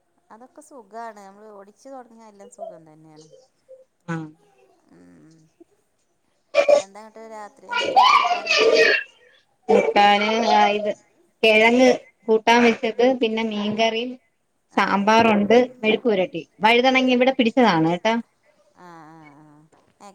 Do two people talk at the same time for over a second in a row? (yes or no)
no